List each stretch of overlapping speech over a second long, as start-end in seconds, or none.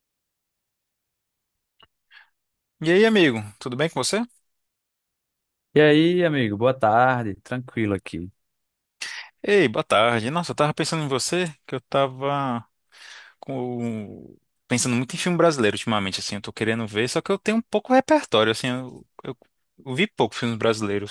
none